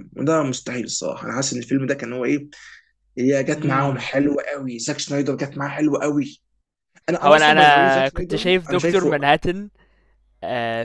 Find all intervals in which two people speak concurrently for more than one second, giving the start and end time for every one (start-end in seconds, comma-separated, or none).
7.2-9.2